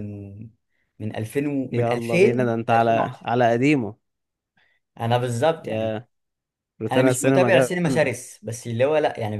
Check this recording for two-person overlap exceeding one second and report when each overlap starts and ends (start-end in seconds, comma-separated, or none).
1.7-3.3, 6.9-8.1